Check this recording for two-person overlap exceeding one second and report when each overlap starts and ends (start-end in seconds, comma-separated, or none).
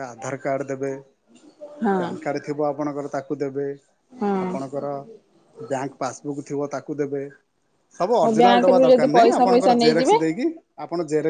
8.2-10.2